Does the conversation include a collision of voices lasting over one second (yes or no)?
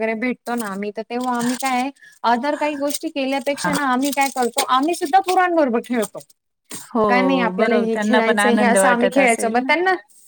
yes